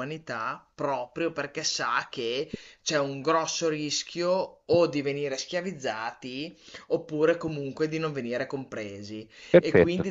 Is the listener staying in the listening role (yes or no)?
yes